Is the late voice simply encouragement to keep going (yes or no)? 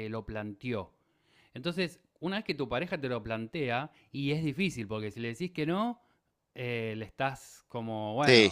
yes